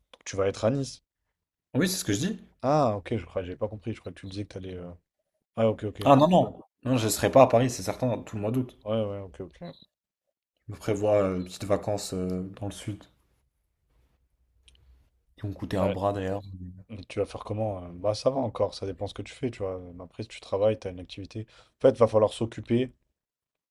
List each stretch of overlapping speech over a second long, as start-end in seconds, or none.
none